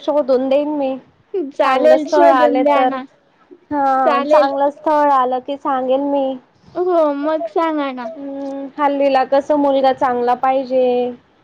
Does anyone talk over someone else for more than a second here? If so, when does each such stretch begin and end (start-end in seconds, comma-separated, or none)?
1.6-3.0